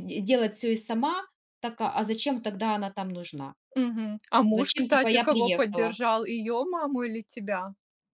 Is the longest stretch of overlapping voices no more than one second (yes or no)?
no